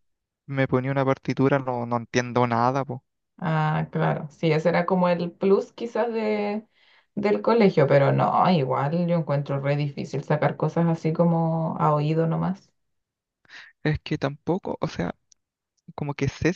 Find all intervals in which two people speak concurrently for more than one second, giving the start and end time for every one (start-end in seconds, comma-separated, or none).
none